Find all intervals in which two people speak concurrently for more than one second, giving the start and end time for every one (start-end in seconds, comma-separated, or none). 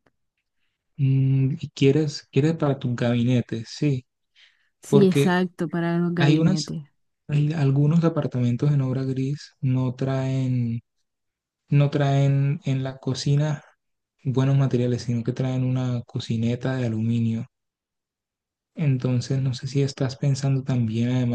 none